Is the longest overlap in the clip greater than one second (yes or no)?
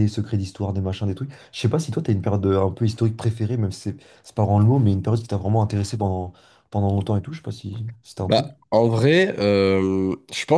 no